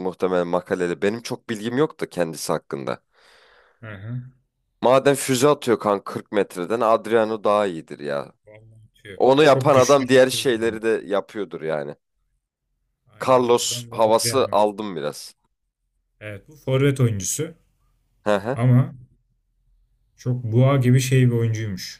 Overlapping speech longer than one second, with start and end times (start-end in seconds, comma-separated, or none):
9.2-10.6, 13.2-14.6